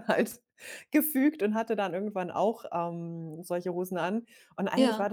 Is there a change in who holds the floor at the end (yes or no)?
no